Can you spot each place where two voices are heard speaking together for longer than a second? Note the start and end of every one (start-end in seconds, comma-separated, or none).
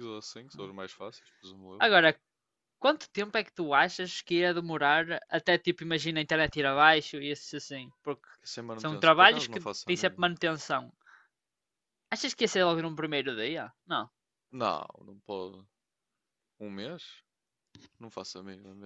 8.8-10.3